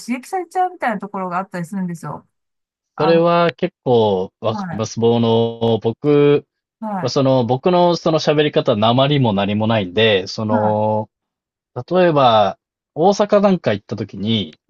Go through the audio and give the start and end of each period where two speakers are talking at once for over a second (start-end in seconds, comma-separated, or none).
none